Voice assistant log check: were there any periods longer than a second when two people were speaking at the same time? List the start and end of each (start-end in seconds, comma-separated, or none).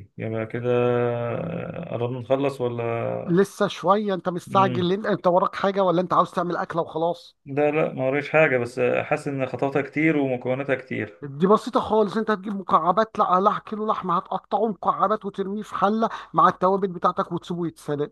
none